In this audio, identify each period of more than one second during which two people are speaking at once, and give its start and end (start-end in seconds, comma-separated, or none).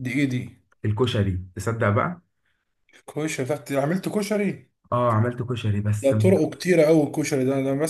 none